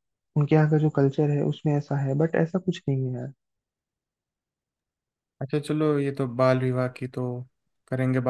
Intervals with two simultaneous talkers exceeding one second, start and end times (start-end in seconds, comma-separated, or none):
none